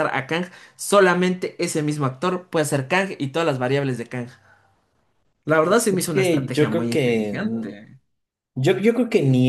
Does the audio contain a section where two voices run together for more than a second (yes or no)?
yes